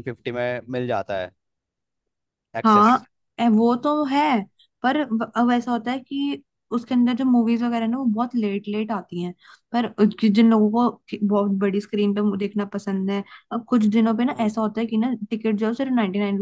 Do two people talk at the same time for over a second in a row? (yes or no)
no